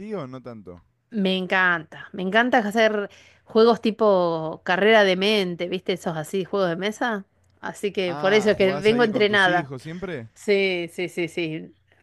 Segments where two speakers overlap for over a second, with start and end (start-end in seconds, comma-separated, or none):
8.0-9.7